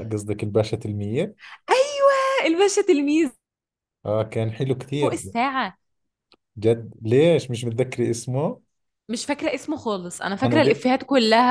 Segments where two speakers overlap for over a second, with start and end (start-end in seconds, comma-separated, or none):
none